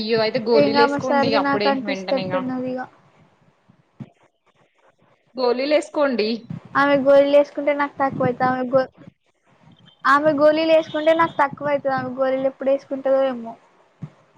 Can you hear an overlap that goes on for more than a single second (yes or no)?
yes